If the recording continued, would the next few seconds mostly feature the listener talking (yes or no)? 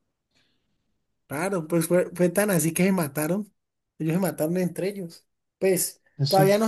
no